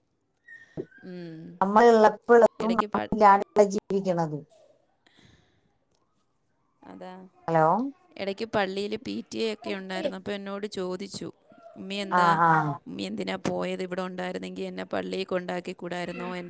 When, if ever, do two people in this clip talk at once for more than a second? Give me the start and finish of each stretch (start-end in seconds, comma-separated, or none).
none